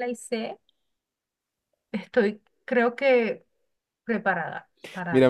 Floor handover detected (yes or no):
yes